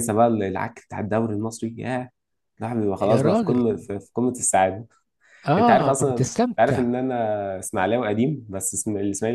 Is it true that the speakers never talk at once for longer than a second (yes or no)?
no